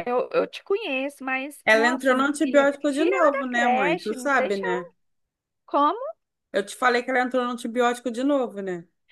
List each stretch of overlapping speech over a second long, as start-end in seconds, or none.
1.6-4.9